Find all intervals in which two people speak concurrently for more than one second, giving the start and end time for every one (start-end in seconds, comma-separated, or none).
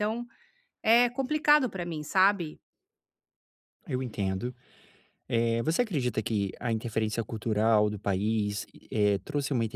none